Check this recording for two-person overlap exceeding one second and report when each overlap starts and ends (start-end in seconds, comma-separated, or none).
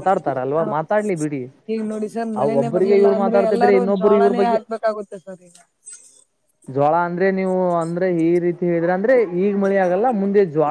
2.4-4.5